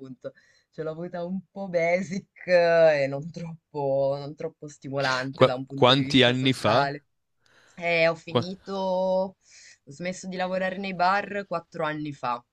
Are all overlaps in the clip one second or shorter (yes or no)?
no